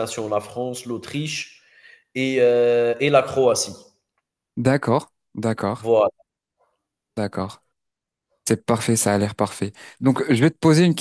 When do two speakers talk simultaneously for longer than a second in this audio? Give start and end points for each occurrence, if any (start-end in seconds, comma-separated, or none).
none